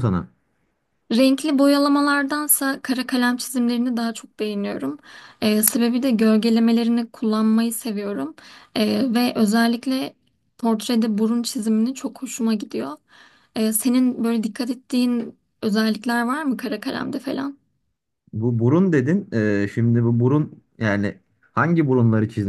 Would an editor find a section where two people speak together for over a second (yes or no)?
no